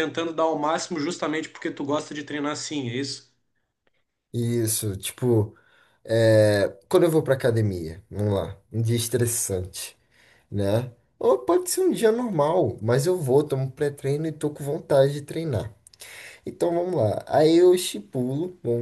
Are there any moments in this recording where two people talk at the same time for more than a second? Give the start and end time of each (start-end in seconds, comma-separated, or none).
none